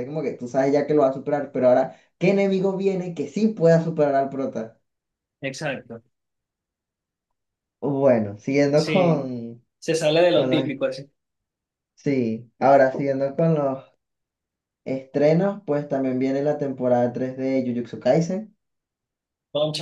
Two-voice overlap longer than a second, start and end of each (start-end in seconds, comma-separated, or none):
none